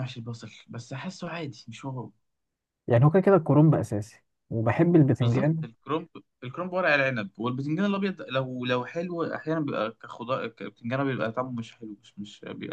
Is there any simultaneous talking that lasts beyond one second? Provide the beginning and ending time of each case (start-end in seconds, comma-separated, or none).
none